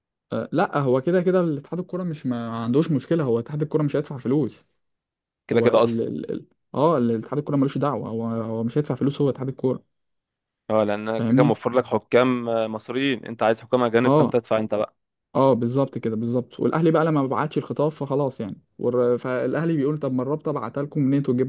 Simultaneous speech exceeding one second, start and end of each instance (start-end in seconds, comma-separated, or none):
none